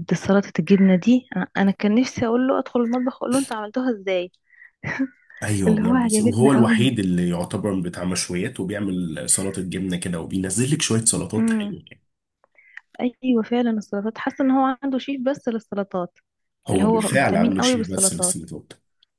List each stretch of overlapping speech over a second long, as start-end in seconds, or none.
5.7-7.0, 16.7-18.4